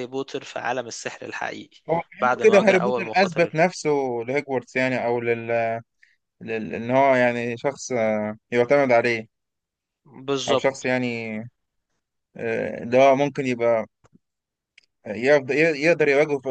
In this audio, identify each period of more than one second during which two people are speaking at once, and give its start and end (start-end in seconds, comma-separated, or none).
2.2-3.6